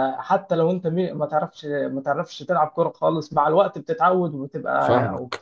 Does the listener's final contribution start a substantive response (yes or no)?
yes